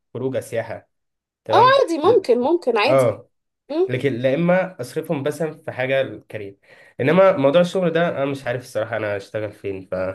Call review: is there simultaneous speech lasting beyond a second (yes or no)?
no